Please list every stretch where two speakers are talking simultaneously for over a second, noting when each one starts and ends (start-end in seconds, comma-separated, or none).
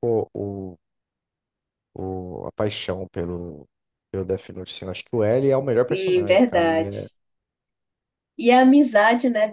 5.7-7.0